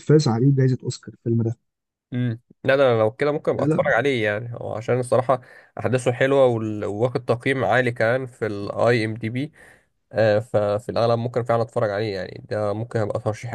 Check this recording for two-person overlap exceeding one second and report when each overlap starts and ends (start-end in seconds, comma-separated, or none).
none